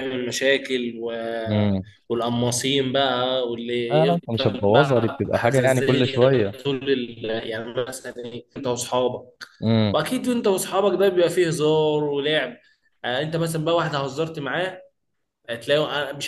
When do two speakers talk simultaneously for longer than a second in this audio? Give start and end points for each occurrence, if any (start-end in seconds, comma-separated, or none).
3.9-6.5